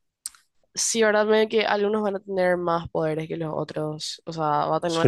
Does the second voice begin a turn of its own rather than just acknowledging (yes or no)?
yes